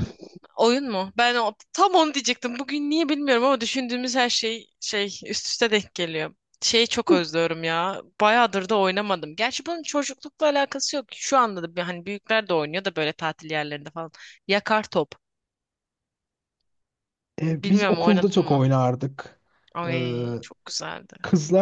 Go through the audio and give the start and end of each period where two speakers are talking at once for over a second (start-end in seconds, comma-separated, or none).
17.5-18.7